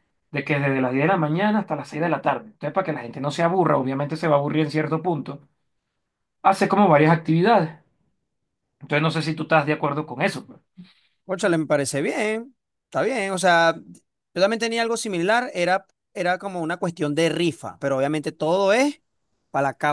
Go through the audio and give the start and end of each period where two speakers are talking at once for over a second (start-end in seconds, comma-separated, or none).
none